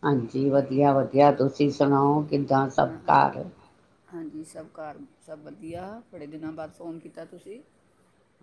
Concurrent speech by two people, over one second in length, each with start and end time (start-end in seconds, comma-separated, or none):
none